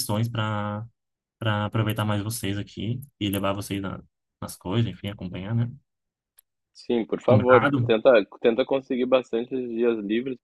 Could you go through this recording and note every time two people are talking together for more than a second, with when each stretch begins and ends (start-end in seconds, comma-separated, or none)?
none